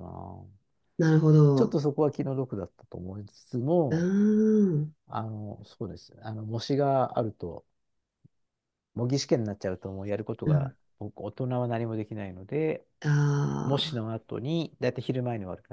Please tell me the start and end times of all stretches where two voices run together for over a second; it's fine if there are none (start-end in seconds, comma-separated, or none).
none